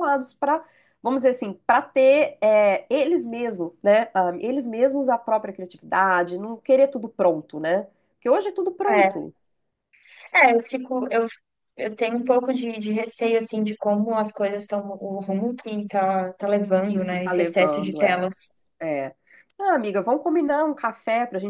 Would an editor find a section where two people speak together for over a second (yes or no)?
yes